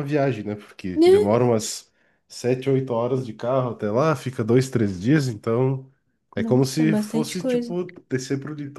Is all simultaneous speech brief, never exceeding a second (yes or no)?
no